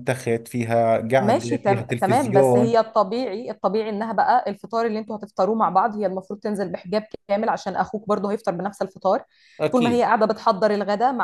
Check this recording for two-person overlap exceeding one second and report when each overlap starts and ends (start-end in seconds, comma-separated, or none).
1.2-2.8